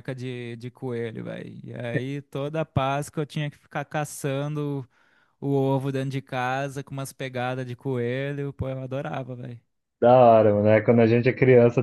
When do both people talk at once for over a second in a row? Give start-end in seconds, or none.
none